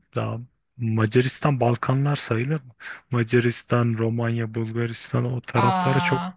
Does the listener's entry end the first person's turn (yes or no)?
no